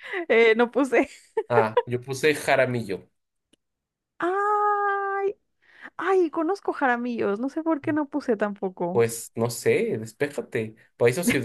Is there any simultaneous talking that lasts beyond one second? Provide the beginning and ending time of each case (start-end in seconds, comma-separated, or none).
none